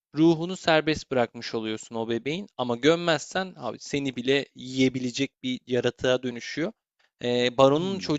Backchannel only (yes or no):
yes